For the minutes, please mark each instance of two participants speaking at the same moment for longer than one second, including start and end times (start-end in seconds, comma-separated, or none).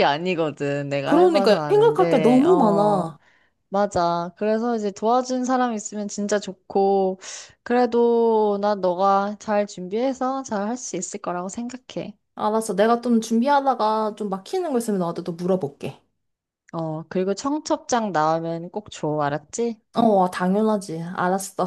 1.0-3.1